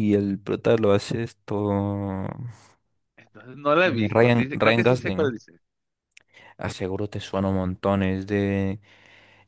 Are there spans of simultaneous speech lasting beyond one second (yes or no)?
yes